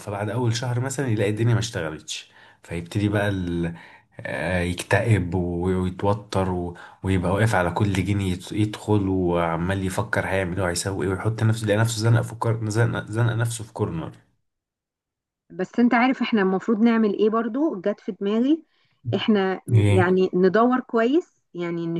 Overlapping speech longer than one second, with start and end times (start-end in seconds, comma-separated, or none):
none